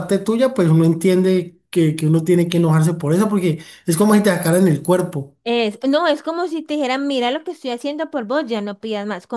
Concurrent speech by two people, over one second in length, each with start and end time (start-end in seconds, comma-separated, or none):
none